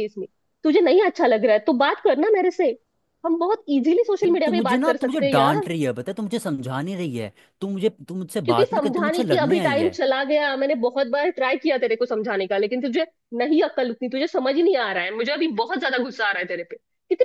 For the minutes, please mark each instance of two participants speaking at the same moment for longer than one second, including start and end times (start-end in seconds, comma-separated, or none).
4.2-5.7, 8.4-10.0